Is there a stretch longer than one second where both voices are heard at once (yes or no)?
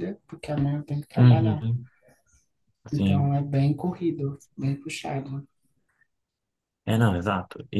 no